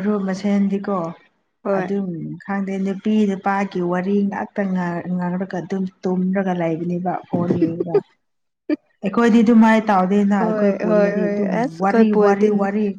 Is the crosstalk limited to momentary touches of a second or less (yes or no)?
no